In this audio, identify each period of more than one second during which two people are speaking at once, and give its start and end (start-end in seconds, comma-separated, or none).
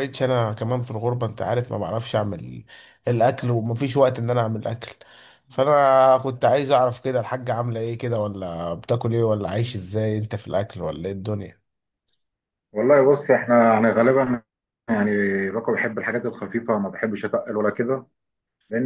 none